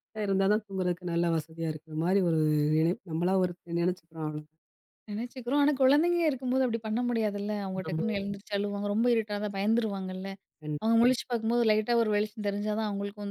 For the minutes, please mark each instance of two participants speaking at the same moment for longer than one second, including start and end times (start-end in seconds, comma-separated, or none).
none